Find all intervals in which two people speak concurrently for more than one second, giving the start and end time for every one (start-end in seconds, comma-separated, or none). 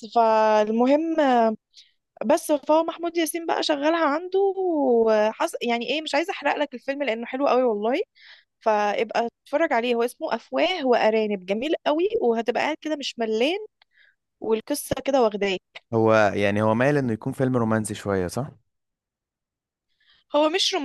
none